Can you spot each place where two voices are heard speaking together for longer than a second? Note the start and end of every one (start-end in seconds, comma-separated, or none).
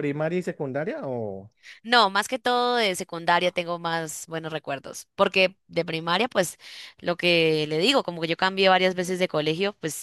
none